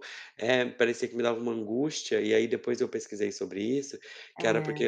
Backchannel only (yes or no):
yes